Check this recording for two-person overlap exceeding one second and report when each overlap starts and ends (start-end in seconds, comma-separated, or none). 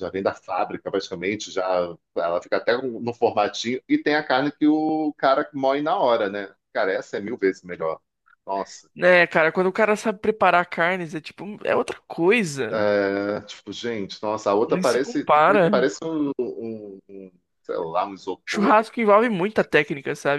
14.7-15.9